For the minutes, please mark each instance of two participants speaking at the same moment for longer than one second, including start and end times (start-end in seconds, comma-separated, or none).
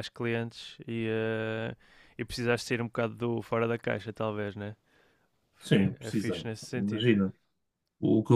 5.6-7.1